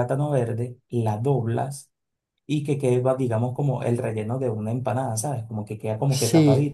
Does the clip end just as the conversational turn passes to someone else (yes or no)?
no